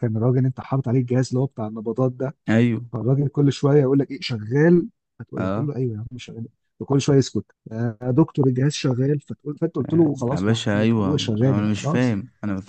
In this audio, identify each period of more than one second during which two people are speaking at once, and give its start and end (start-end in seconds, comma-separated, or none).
10.3-12.1